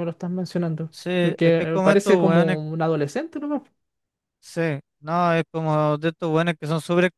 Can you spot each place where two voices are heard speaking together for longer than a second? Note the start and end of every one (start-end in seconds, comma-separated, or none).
0.9-2.6